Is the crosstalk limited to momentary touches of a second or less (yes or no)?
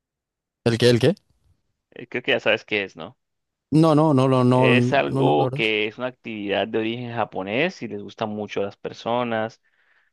no